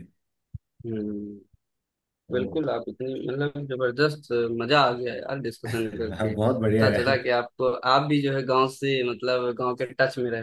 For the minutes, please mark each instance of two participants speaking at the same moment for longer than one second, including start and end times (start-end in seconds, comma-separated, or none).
5.7-7.2